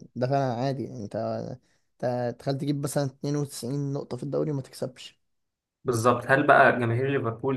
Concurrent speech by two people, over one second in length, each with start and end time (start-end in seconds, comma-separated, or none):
none